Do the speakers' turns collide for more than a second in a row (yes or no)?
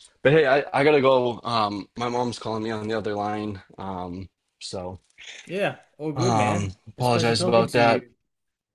yes